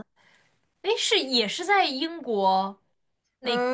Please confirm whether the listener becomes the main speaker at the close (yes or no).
yes